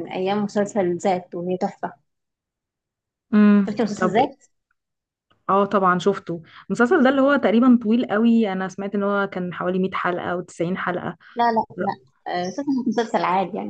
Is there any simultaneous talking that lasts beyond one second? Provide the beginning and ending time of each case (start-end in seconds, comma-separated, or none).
none